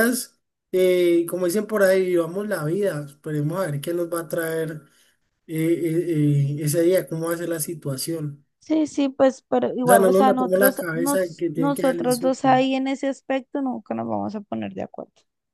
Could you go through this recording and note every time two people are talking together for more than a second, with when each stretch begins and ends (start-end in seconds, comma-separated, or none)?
9.8-12.5